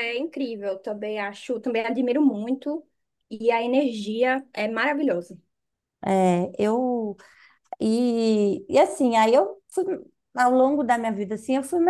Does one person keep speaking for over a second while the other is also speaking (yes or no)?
no